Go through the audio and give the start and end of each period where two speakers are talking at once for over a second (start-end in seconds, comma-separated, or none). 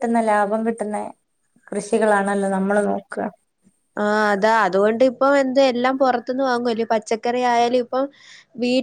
none